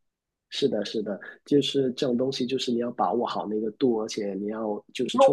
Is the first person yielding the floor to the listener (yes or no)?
yes